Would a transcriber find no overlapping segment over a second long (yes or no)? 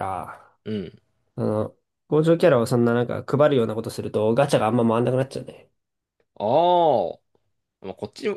yes